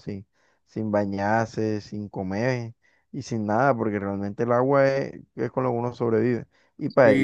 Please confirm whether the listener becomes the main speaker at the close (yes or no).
no